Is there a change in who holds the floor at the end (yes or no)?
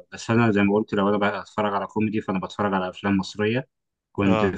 no